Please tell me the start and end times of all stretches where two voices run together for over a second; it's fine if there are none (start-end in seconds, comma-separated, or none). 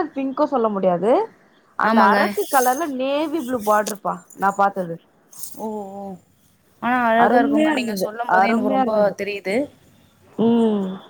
7.2-9.1